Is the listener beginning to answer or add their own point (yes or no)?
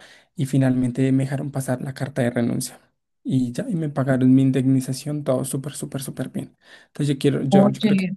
no